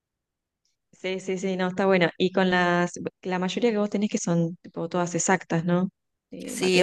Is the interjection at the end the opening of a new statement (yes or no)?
yes